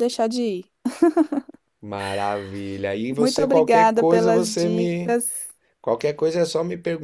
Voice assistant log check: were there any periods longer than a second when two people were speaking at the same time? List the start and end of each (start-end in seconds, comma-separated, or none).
3.1-5.2